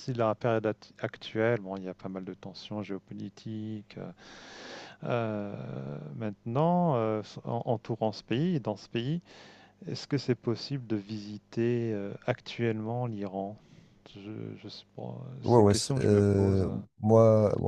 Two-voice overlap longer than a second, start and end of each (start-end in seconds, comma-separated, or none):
15.4-16.6